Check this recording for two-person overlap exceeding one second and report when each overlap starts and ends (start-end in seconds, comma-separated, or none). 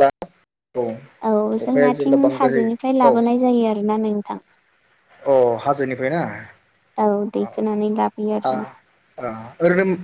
1.7-3.4